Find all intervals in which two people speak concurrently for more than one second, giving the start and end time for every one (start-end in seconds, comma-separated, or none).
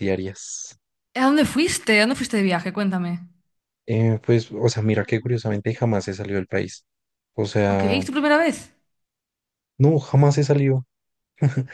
none